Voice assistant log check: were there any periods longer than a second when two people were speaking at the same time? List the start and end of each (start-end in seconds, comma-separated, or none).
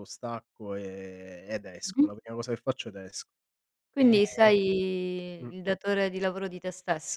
none